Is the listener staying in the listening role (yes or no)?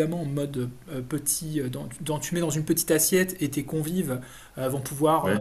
yes